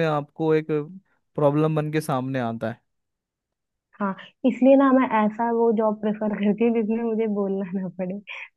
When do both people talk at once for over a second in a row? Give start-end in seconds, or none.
none